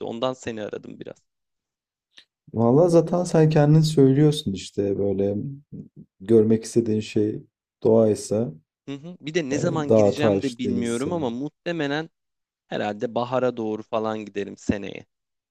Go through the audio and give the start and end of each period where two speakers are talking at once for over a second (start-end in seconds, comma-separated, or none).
9.5-11.3